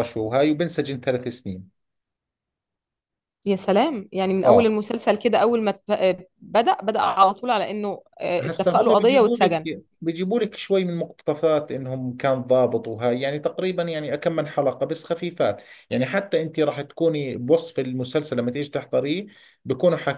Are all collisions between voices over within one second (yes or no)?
no